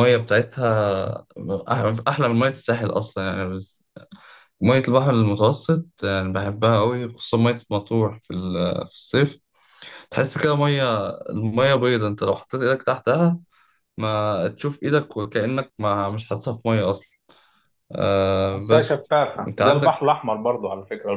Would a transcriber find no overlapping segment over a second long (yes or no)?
no